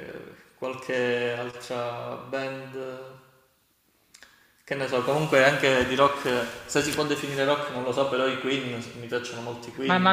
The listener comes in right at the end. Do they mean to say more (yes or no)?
yes